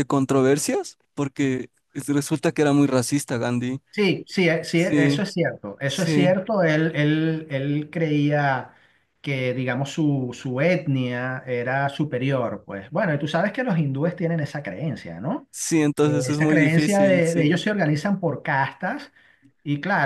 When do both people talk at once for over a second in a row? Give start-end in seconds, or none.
16.0-17.6